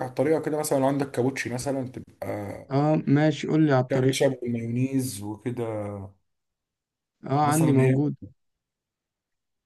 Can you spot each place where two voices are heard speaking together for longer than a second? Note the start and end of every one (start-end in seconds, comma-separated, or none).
none